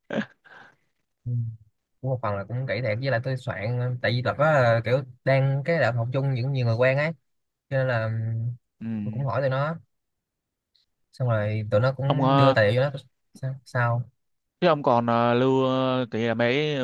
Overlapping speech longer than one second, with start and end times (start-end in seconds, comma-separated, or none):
none